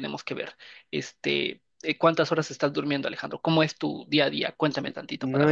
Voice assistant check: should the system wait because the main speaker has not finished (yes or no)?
no